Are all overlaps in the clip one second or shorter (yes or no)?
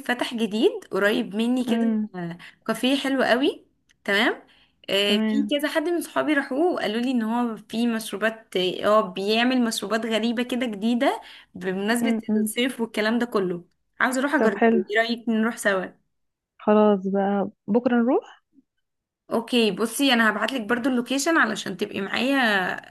yes